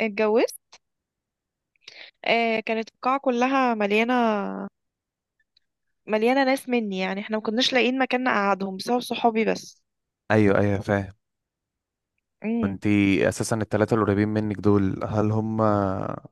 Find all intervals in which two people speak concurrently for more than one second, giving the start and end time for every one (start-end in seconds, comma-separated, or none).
none